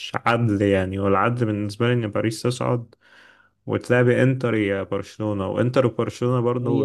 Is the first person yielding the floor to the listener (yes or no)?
no